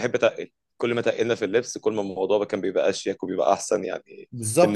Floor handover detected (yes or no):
yes